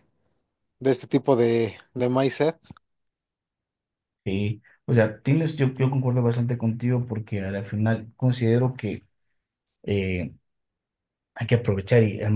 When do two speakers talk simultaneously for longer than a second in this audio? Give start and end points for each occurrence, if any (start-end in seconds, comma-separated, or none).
none